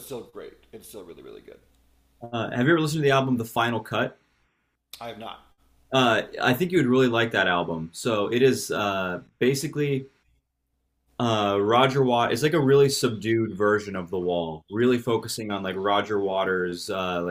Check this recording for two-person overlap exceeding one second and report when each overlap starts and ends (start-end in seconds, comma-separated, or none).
none